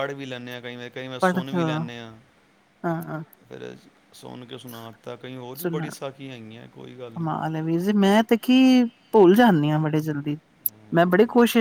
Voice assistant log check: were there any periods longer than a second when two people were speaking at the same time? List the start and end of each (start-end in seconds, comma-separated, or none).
none